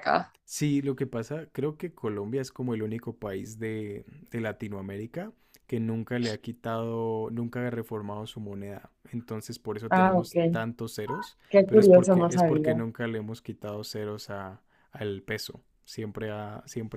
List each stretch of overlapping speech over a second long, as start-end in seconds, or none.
11.5-12.8